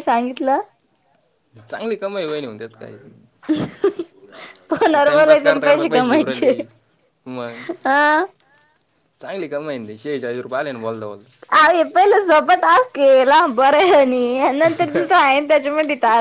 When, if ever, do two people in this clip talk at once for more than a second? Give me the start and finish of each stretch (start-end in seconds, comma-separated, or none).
5.1-6.5